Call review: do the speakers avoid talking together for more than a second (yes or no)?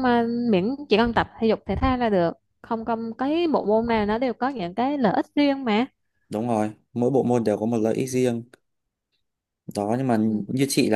yes